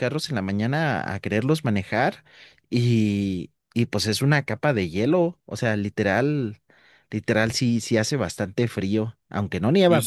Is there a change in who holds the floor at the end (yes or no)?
yes